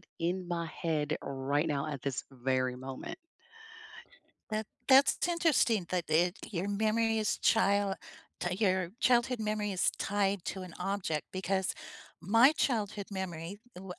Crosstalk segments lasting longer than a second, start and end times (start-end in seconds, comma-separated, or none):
none